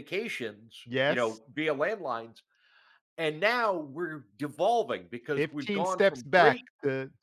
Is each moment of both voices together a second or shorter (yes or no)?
no